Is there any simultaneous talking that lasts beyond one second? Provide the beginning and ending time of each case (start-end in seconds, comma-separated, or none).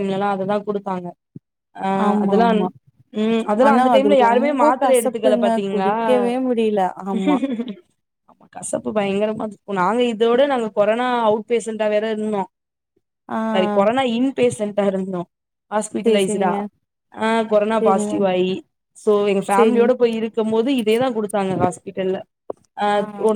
3.7-5.9